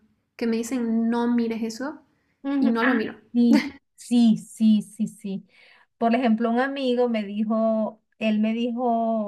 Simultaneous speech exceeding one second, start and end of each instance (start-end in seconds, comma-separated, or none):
none